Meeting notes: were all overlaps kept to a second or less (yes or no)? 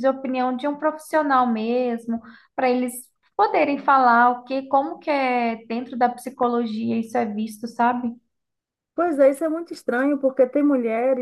yes